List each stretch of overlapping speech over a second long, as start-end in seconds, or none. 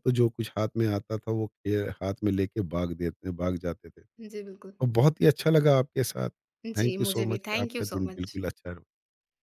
6.8-8.4